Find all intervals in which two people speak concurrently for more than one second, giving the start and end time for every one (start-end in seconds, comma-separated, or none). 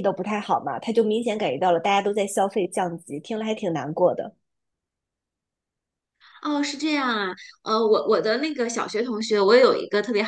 none